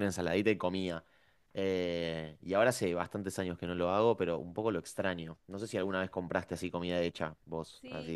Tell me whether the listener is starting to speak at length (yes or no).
yes